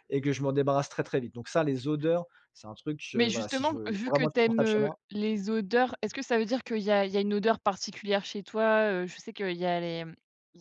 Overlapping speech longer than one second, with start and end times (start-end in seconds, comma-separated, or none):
3.1-5.0